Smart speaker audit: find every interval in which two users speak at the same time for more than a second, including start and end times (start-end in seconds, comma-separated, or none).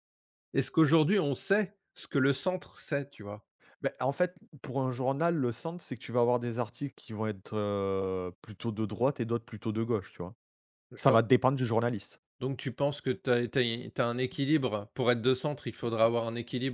none